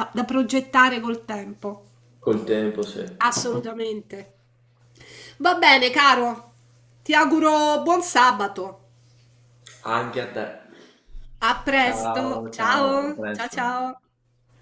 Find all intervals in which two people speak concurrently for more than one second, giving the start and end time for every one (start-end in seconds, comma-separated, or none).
11.8-13.6